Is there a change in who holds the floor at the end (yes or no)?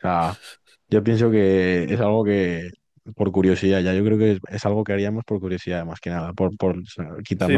yes